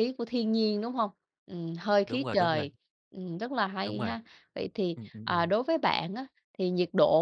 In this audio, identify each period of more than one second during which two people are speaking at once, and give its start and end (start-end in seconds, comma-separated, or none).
none